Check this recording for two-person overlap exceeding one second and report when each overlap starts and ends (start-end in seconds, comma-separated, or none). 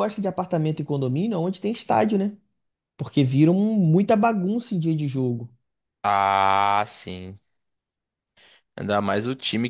none